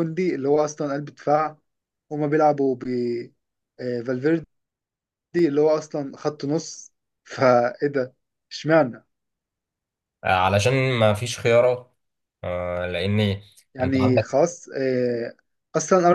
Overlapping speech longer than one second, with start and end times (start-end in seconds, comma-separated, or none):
none